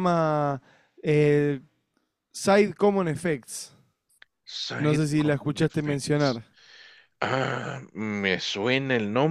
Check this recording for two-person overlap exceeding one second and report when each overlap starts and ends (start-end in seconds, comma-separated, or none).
4.8-6.4